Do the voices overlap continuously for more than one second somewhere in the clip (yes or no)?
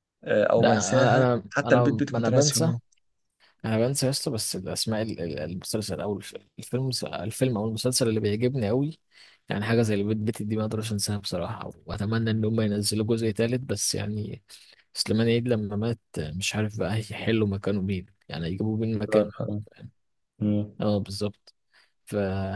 yes